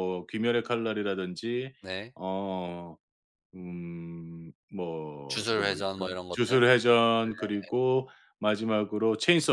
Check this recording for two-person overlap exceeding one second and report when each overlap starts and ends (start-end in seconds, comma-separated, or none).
5.3-6.6